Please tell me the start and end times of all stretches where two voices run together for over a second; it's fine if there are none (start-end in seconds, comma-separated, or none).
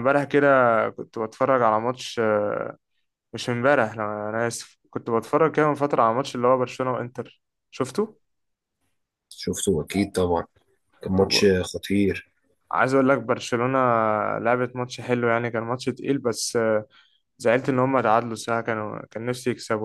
none